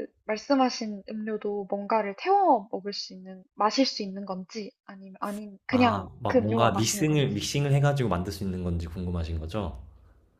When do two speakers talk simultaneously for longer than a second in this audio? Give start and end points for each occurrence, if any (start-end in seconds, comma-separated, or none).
5.7-7.3